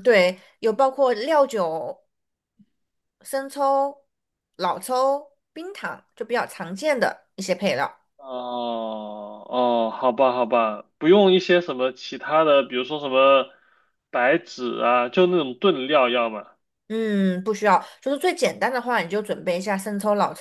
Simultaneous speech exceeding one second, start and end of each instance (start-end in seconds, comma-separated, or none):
none